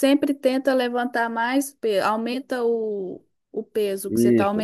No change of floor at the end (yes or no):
no